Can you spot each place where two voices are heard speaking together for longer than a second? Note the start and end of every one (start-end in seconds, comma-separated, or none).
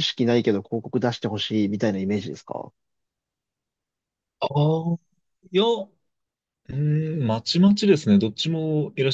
none